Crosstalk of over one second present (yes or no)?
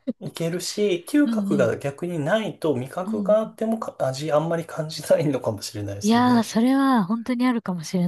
no